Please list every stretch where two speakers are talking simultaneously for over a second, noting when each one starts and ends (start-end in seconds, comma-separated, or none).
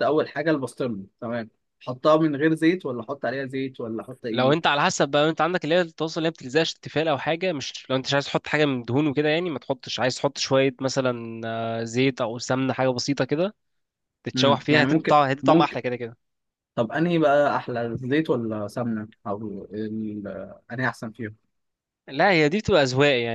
14.4-15.8